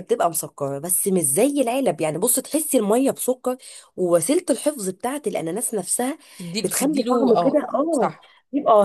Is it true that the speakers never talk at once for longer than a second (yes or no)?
no